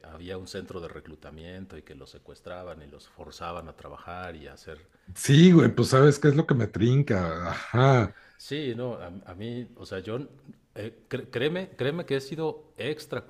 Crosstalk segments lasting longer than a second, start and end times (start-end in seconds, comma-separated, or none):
none